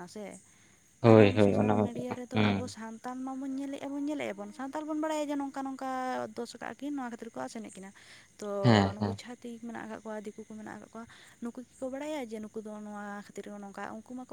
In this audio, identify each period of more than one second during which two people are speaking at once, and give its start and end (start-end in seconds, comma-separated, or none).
1.1-2.8